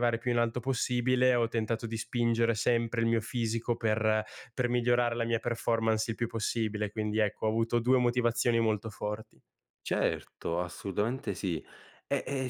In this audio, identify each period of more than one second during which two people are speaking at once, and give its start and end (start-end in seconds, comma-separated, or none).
none